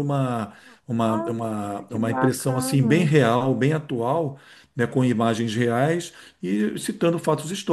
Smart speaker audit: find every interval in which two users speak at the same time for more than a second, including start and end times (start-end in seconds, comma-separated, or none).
1.0-3.1